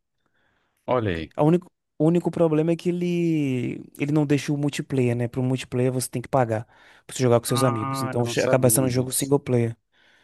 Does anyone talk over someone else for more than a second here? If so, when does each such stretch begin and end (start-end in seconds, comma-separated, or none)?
7.5-9.3